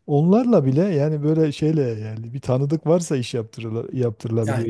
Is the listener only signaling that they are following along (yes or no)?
no